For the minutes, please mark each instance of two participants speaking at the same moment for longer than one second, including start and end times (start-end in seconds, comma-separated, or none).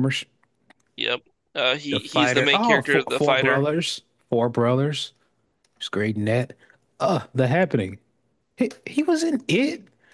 1.9-3.6